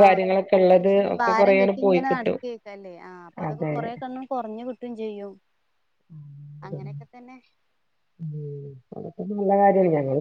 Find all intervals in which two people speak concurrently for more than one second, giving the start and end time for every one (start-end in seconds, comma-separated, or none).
0.7-2.4